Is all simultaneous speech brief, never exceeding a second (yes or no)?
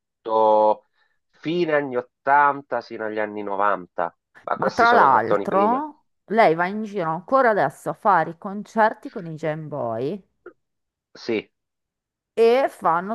no